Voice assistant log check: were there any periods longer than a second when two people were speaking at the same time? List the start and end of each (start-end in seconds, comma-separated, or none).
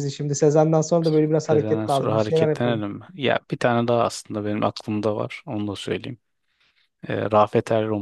1.5-2.8